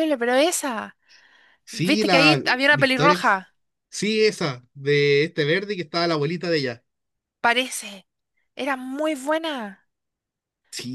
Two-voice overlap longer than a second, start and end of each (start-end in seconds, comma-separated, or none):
1.7-3.4